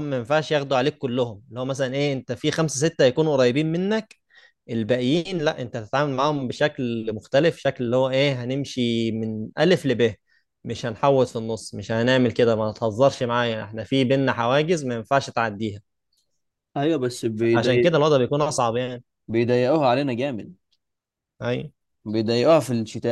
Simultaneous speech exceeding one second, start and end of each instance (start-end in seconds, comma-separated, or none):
none